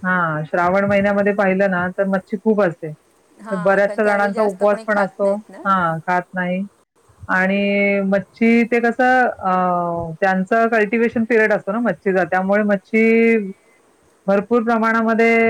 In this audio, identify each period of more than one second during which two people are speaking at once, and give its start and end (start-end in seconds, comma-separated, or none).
3.6-5.6